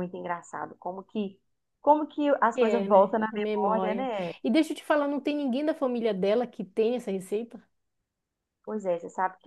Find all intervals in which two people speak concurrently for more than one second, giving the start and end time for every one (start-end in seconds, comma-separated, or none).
2.5-4.1